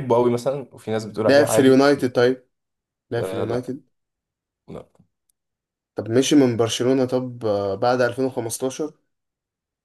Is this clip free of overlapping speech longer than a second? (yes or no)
yes